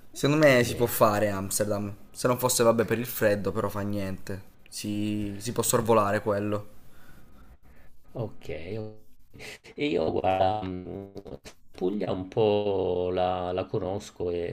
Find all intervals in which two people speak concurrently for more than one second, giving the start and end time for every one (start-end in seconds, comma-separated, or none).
none